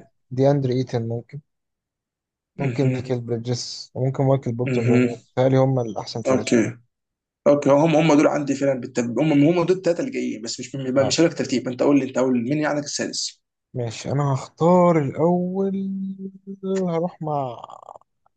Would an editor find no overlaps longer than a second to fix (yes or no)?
yes